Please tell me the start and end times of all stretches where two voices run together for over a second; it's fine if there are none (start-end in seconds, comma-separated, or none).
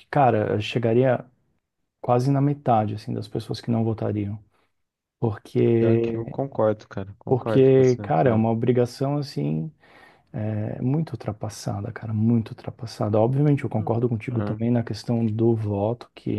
7.3-8.5